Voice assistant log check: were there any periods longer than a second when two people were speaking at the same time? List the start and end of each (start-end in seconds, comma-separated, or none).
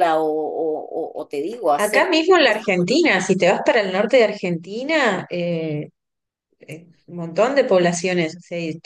1.8-3.2